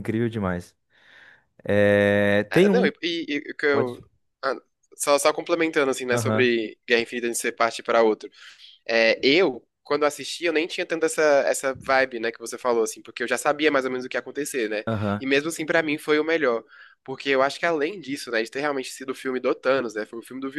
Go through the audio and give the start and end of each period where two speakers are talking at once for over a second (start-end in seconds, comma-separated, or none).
none